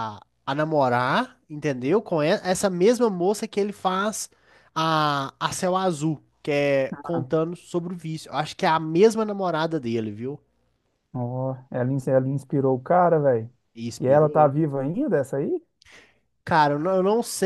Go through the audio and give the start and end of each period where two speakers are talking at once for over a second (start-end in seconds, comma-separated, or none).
none